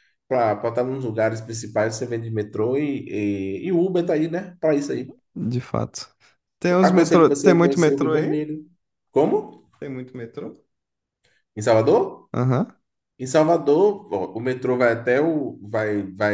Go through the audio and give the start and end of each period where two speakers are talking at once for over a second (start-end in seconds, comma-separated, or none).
6.8-8.5